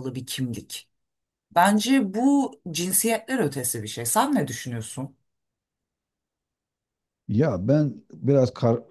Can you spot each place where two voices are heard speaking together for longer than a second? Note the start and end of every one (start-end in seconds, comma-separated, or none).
none